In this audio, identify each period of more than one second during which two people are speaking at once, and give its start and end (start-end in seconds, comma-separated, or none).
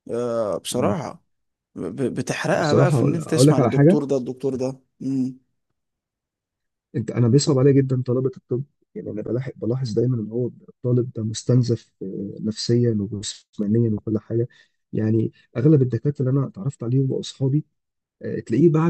2.5-4.0